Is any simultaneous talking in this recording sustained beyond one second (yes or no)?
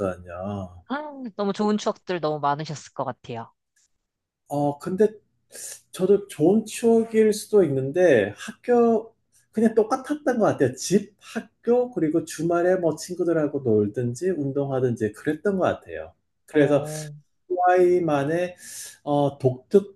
no